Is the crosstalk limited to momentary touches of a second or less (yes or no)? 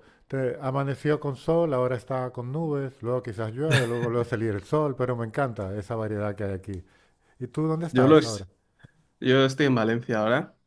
yes